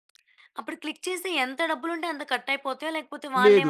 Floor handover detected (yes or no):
yes